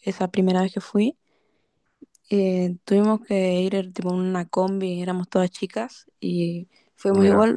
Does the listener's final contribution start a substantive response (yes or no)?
no